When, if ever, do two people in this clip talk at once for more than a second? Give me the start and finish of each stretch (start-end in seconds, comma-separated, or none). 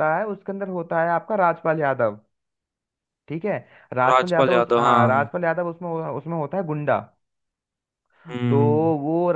4.1-5.3